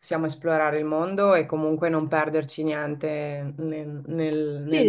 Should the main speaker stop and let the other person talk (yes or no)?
yes